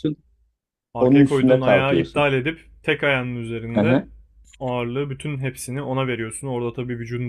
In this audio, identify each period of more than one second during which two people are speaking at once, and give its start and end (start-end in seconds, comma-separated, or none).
1.0-2.3